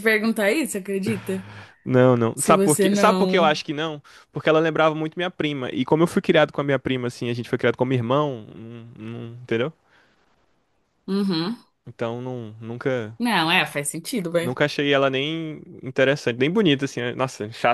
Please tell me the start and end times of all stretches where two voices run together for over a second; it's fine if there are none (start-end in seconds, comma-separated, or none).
2.3-3.6